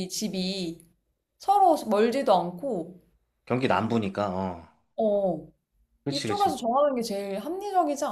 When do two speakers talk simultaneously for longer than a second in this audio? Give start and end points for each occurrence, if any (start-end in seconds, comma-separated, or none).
none